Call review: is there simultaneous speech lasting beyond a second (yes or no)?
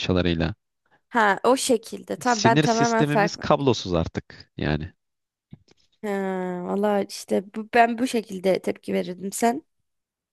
yes